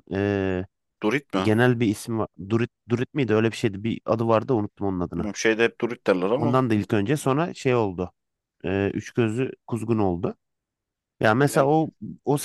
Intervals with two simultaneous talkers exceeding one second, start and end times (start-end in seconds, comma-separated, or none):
none